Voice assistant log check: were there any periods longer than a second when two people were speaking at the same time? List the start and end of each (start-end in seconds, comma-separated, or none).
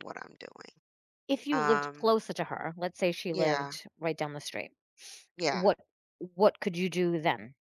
none